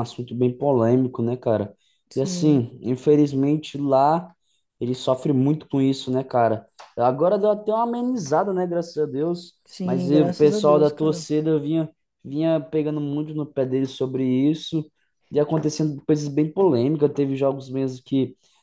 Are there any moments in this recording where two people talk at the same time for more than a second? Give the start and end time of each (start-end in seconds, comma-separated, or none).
9.7-11.3